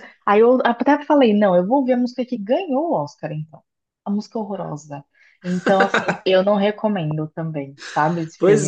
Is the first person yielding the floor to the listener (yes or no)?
yes